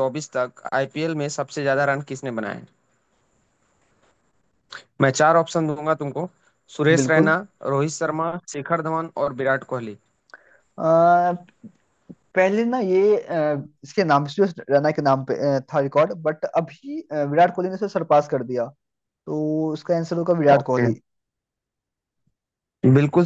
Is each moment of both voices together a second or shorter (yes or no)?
yes